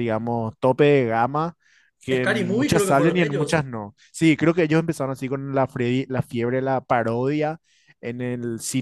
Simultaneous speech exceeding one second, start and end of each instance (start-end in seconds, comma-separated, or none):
2.1-3.7